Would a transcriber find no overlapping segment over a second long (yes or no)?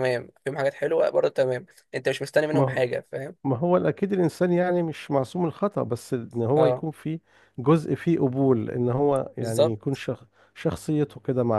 yes